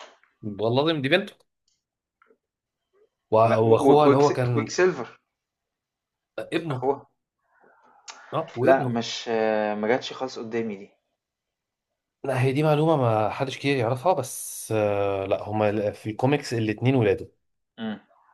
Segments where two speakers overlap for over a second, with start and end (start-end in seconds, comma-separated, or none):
3.5-4.7